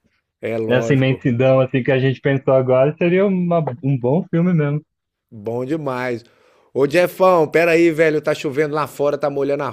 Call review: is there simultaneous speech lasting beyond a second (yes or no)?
no